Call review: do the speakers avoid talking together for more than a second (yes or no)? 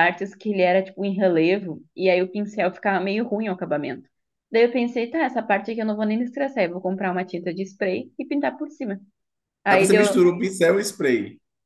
yes